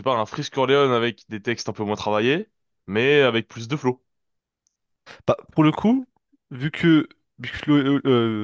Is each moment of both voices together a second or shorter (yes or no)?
yes